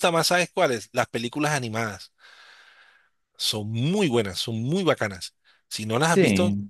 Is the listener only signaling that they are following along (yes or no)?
yes